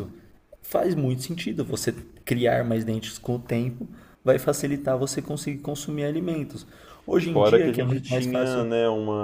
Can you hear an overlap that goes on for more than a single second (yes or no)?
yes